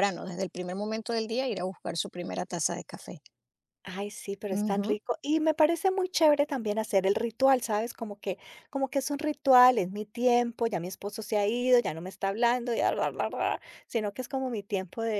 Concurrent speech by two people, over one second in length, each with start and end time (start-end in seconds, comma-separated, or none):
none